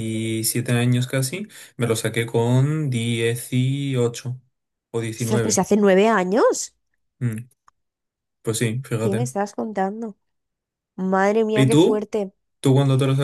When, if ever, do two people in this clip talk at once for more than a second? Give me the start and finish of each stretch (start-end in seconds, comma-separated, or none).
none